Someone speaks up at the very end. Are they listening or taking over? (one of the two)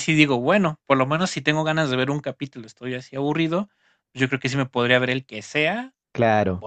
listening